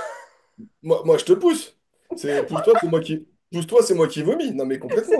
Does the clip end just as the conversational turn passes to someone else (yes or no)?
yes